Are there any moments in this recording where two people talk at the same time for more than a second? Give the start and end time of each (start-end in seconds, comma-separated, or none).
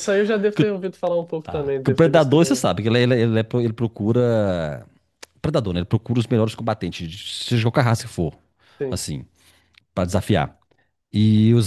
1.4-2.8